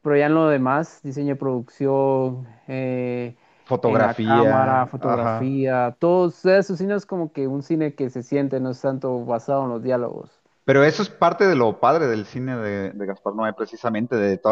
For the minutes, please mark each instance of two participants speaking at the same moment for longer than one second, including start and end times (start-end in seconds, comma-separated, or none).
3.9-5.5